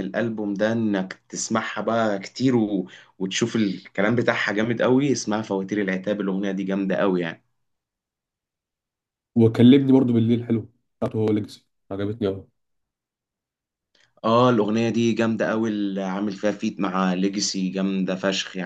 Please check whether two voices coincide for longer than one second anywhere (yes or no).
no